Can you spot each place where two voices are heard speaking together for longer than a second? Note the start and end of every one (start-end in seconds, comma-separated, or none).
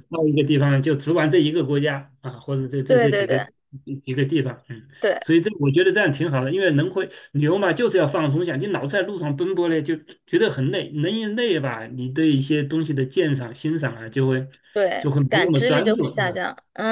15.0-16.4